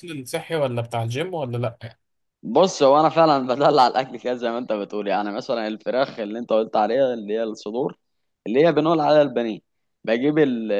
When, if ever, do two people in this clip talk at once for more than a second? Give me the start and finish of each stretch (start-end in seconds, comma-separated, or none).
none